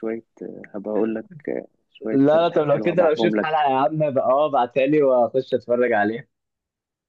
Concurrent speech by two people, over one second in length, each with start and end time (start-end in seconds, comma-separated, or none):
2.1-3.5